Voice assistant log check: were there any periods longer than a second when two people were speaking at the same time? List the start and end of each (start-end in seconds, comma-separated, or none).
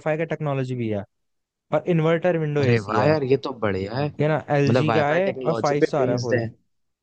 4.5-6.4